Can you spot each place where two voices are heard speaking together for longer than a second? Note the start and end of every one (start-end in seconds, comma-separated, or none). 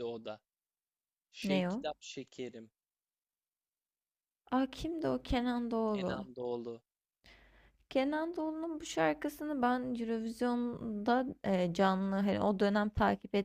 none